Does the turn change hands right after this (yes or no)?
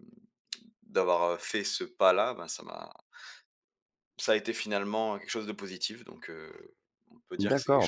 yes